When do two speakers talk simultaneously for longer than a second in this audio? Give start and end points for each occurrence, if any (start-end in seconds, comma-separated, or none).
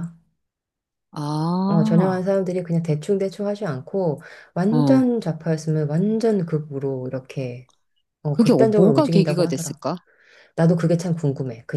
8.3-9.8